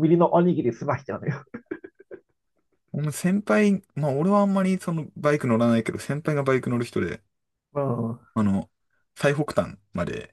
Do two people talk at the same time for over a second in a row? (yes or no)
no